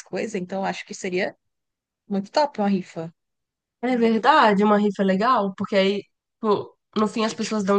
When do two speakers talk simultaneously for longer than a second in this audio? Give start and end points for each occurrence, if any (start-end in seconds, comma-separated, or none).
none